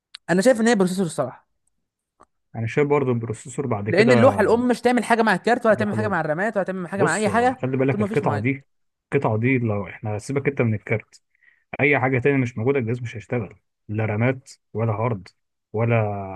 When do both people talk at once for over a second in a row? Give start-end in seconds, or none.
7.0-8.5